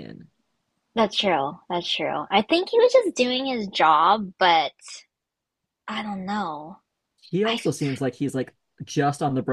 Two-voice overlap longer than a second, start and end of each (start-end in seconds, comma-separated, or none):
none